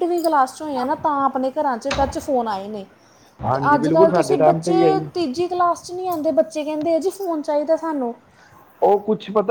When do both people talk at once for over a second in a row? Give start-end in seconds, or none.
3.5-5.0